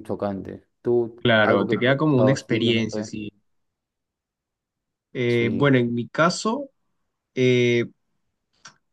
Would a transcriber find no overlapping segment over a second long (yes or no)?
no